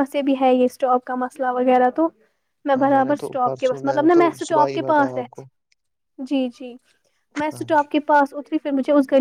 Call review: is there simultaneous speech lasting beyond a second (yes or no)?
yes